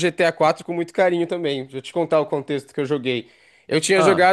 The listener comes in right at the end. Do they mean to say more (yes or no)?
no